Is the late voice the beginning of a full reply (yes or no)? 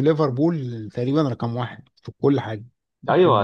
yes